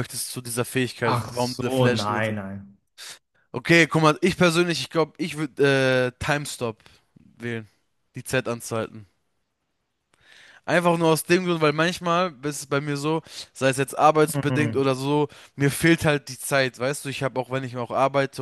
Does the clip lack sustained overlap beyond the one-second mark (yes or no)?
no